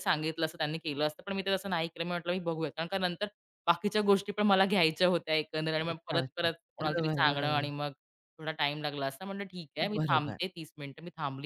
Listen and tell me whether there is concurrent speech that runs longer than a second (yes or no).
yes